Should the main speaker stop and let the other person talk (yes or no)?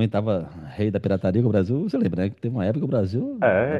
yes